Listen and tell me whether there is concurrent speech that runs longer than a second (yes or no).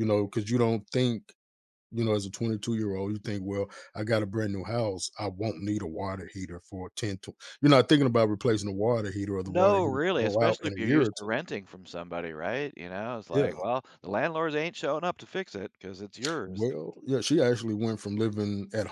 yes